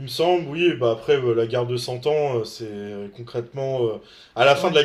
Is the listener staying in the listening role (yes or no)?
yes